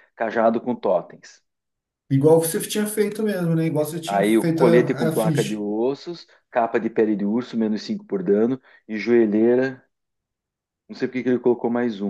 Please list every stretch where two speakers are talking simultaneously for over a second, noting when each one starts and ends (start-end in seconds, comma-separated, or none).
4.0-5.6